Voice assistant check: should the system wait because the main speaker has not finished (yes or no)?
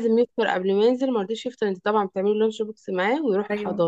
yes